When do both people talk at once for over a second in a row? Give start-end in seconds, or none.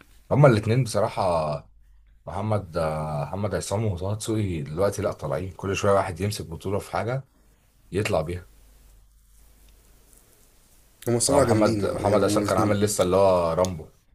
11.3-12.8